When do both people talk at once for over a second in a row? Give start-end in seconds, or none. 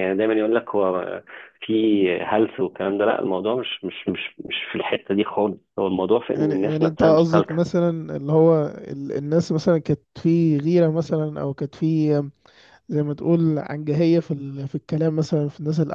6.3-7.7